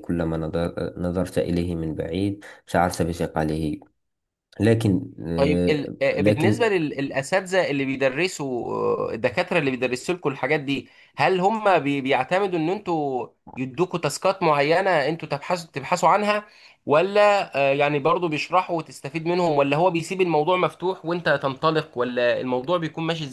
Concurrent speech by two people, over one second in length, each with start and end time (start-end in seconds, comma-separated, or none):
5.3-6.7